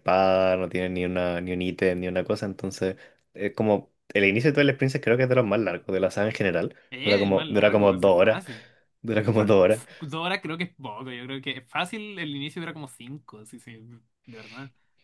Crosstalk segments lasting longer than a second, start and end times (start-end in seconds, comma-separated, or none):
6.9-8.4